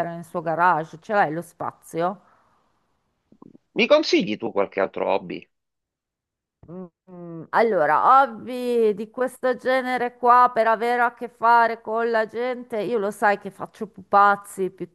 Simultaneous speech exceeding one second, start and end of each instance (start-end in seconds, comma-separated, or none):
none